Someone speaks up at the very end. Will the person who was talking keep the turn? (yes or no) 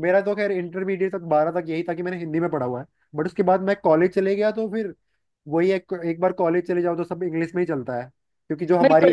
no